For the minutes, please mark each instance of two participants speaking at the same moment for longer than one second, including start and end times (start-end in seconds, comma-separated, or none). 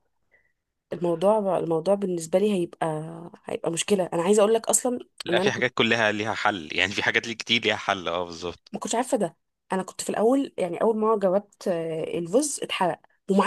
none